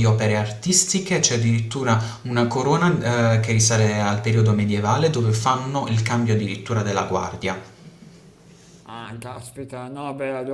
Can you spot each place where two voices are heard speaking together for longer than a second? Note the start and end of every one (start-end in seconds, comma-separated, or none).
none